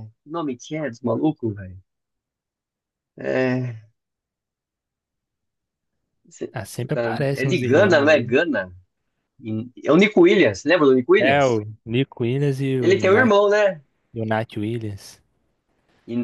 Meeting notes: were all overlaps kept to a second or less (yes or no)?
no